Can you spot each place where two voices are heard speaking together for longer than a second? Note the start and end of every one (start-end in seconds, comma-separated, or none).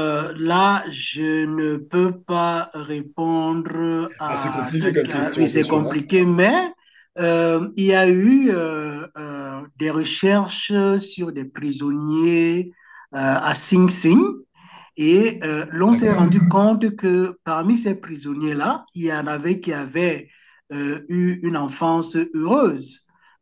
4.3-6.1